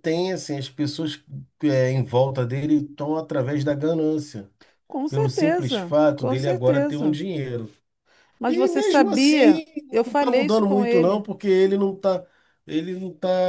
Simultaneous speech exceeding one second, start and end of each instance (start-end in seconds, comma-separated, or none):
5.1-7.2, 8.5-11.2